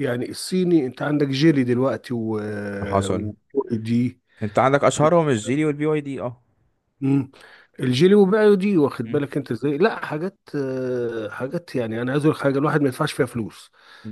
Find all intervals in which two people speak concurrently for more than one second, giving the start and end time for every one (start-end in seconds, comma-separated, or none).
none